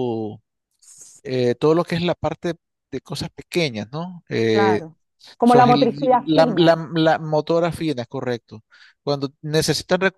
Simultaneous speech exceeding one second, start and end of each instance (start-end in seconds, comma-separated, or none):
5.4-6.8